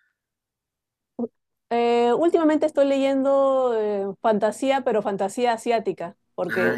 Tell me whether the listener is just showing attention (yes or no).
yes